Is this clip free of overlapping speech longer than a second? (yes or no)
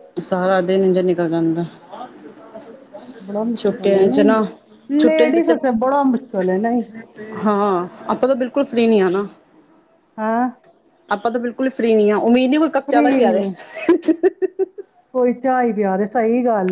yes